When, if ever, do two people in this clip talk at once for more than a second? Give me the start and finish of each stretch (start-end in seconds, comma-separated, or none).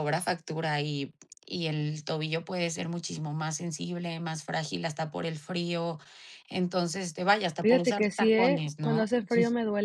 7.6-9.1